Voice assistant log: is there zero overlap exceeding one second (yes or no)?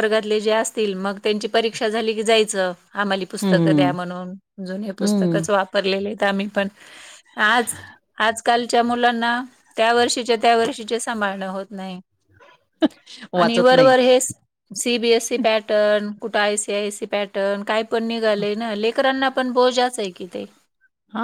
yes